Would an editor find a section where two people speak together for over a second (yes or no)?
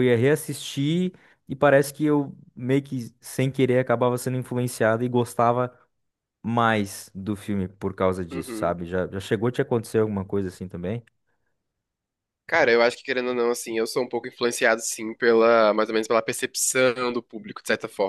no